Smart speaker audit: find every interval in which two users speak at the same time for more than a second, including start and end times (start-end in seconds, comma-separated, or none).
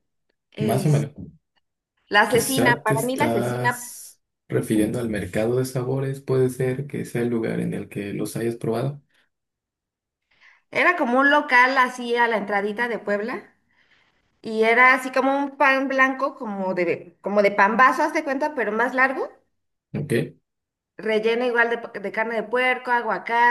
2.3-4.0